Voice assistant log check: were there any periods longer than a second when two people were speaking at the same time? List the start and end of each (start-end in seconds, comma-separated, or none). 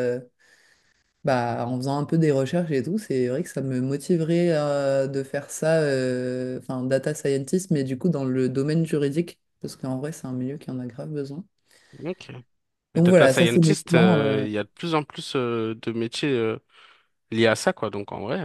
12.9-14.5